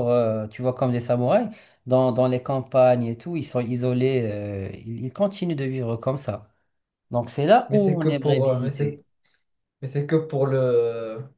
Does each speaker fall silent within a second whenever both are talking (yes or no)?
no